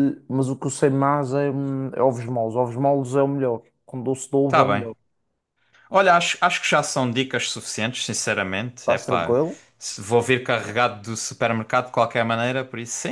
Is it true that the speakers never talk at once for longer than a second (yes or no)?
yes